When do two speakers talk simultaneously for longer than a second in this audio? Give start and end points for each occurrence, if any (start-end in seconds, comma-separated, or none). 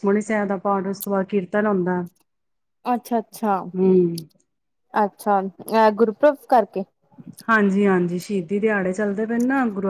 none